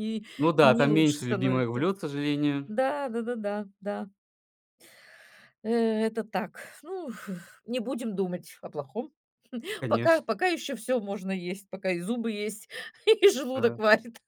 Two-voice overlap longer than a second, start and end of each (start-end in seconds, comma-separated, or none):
0.6-1.9